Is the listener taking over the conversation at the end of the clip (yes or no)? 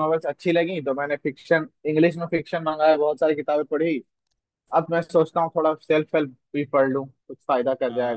yes